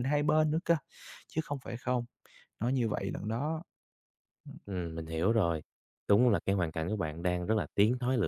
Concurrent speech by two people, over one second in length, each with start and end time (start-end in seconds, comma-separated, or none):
none